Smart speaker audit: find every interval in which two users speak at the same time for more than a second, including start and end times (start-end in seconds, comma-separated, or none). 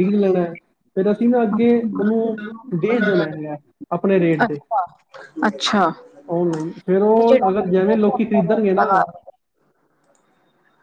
7.2-8.9